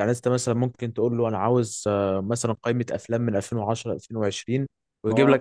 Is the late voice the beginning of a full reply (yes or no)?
no